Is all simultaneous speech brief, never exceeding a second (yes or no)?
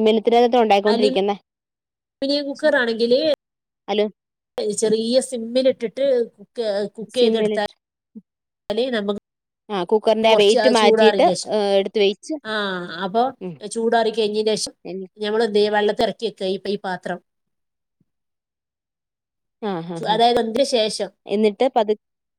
no